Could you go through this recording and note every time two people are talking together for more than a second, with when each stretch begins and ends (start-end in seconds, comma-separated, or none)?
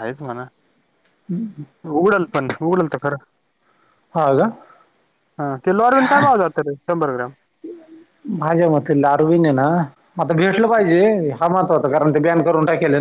none